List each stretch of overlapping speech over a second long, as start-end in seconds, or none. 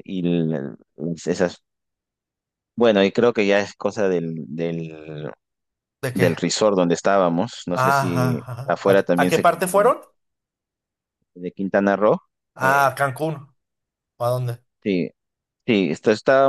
7.7-9.9